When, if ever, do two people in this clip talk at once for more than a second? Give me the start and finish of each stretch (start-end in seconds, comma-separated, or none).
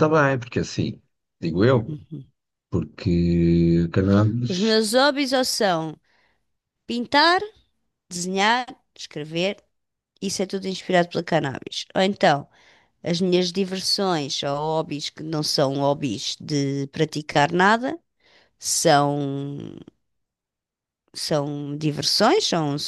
none